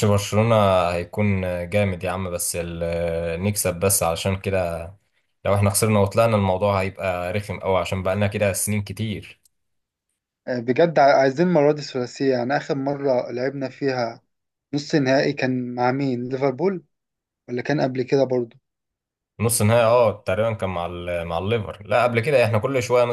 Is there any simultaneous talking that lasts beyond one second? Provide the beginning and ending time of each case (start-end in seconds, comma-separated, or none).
none